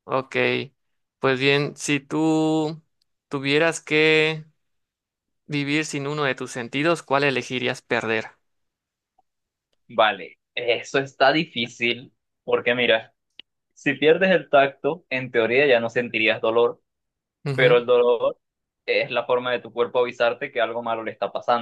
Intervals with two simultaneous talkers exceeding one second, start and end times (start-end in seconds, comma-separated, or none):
none